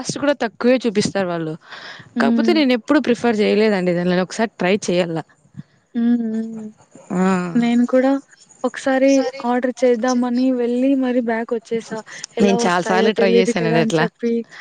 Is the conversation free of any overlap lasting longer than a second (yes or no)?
no